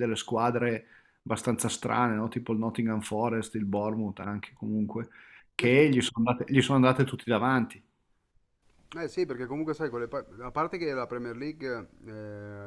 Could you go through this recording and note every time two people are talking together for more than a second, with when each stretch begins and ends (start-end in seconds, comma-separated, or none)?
none